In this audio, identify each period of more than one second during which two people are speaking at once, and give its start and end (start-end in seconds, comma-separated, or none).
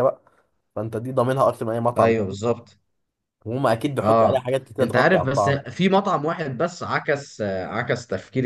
4.0-5.6